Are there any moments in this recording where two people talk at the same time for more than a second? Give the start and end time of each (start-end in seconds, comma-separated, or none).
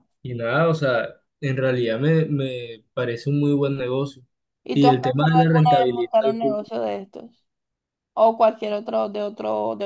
4.7-6.1